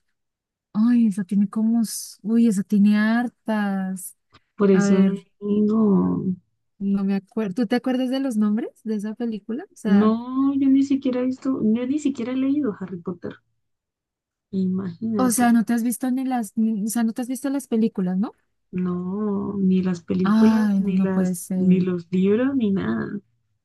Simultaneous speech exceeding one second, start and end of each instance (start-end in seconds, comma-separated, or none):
20.2-21.9